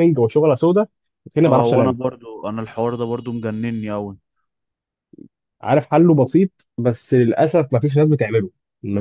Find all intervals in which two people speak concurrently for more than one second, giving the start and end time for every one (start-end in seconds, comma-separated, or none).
none